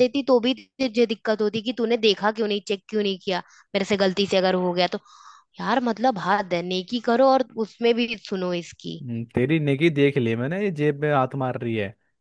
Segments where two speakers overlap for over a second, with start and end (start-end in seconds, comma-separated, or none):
none